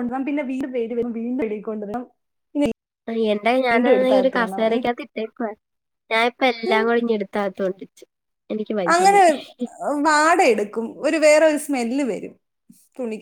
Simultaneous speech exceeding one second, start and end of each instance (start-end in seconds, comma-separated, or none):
none